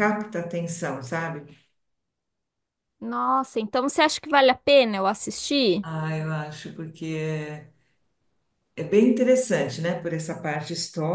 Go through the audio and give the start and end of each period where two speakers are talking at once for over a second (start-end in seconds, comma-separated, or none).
none